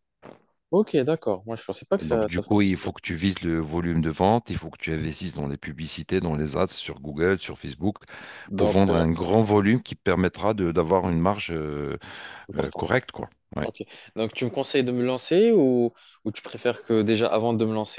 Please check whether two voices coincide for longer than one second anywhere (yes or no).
yes